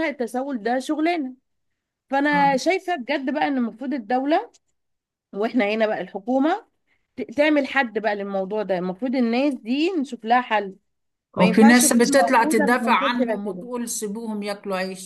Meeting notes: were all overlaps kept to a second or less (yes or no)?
no